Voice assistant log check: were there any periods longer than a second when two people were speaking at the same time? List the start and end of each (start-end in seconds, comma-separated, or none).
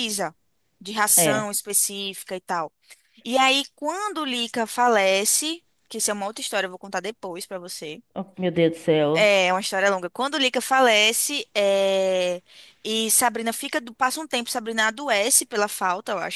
none